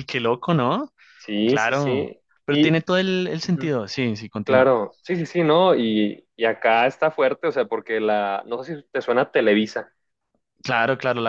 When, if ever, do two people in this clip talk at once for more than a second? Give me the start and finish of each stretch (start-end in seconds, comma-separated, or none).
1.4-2.8